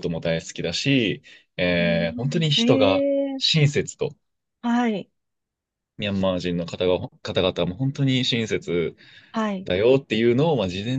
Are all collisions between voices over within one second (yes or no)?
no